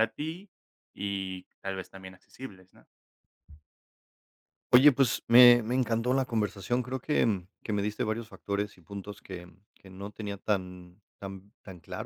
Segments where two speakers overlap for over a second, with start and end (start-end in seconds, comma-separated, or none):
none